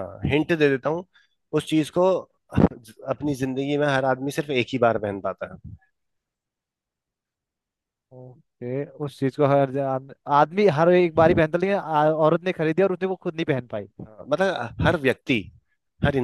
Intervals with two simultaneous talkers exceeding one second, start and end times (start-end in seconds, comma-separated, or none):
none